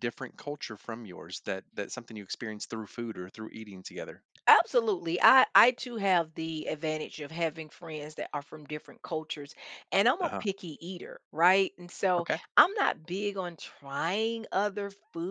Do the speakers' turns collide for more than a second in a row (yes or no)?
no